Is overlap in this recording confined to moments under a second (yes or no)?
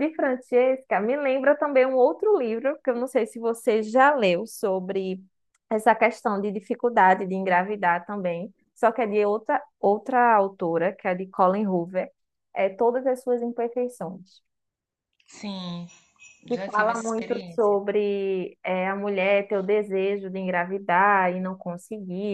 no